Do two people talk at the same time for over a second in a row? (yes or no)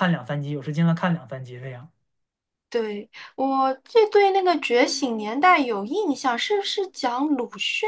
no